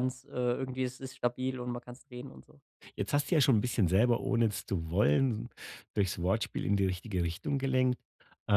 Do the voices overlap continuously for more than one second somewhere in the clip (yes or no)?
no